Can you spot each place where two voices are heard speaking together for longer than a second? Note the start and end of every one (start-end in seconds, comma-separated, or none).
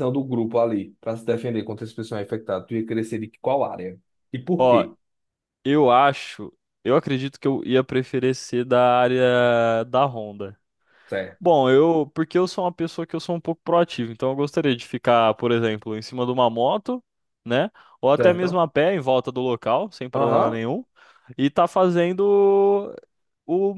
none